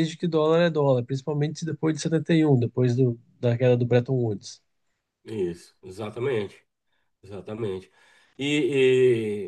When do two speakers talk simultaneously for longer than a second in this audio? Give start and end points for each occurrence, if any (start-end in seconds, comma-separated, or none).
none